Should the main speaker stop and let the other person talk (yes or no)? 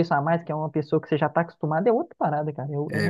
yes